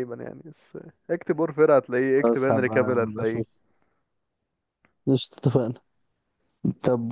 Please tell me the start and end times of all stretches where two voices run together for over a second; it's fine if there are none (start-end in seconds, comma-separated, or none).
2.2-3.4